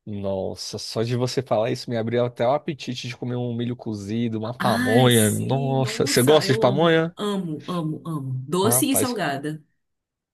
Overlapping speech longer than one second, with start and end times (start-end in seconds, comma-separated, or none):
4.6-7.1